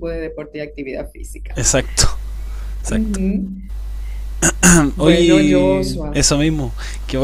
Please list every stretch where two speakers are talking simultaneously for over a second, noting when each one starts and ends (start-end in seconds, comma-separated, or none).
5.0-6.2